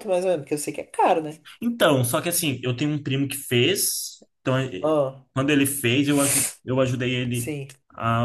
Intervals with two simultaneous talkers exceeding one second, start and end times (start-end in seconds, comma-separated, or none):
none